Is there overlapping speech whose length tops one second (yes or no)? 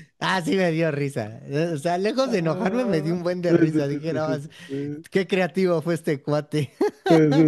yes